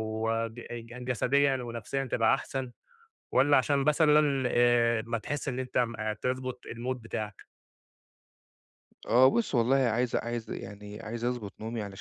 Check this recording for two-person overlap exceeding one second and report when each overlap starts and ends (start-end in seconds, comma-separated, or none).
none